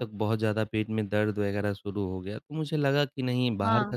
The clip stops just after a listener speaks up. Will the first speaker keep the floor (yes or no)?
yes